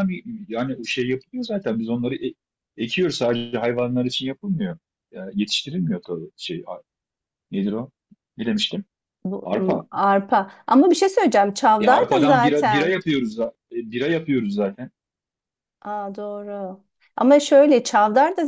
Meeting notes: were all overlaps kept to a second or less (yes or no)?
no